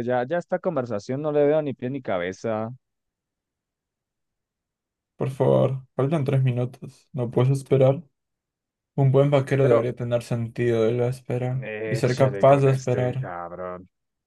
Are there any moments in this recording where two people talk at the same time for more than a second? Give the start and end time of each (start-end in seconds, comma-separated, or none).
11.6-13.3